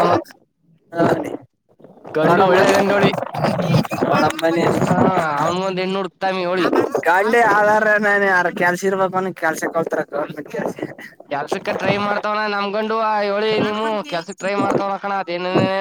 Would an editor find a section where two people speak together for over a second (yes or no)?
no